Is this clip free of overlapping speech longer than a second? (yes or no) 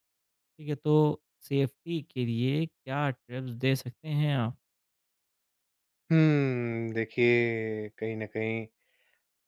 yes